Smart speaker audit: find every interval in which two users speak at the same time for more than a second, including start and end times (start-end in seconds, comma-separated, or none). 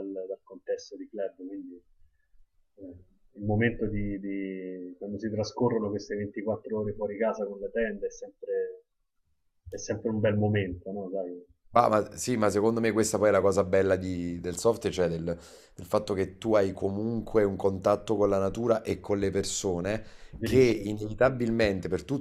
none